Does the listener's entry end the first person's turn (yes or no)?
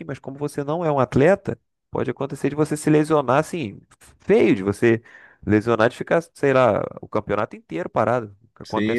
yes